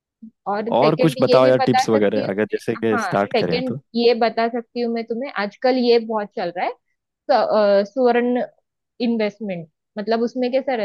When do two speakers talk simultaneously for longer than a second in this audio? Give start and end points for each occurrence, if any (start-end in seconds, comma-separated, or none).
0.7-3.8